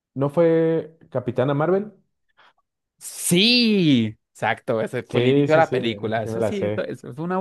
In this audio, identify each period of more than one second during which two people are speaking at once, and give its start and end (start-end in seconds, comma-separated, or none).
5.1-6.9